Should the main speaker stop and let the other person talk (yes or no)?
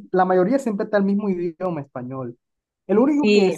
no